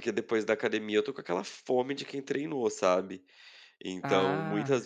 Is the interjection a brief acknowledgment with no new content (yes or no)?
yes